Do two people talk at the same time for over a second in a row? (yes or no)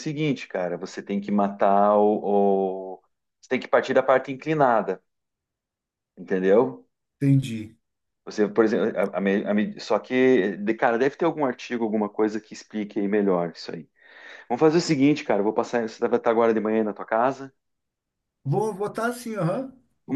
no